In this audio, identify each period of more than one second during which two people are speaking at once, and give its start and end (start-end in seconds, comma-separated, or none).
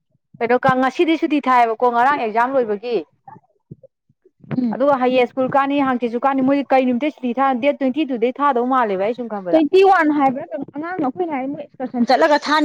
none